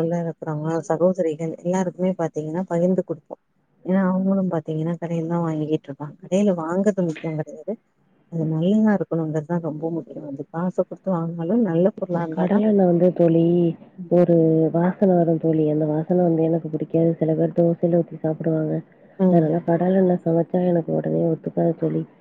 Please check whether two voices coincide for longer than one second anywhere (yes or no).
no